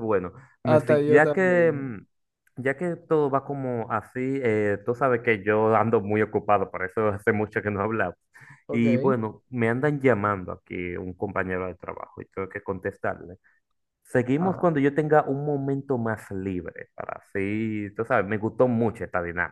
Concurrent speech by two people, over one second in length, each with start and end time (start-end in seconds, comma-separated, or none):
0.6-2.0